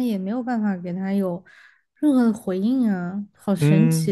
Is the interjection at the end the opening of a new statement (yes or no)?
yes